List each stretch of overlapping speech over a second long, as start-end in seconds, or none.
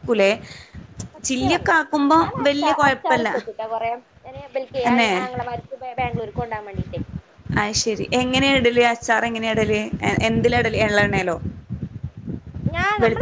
none